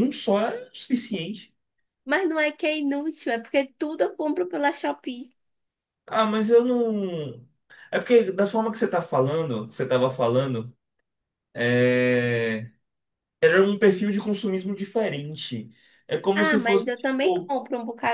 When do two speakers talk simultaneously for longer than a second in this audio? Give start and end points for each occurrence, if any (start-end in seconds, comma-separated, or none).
16.3-17.5